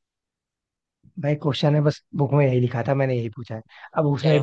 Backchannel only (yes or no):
yes